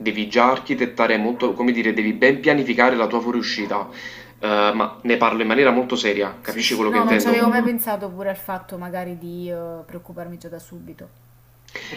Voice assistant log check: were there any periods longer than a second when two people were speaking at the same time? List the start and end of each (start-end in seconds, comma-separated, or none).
6.4-7.7